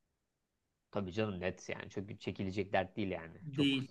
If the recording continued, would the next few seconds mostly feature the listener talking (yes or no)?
yes